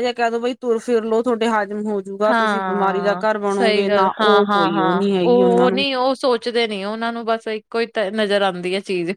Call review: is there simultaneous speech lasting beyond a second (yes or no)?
yes